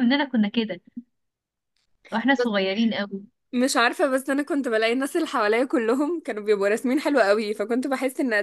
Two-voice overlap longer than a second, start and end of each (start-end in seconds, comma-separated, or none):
none